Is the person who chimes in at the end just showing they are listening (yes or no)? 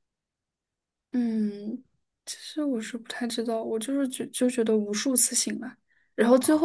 yes